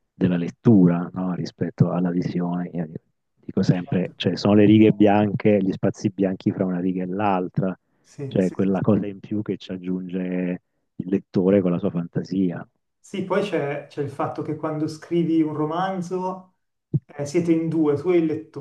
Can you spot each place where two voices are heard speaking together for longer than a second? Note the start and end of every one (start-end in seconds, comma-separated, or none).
none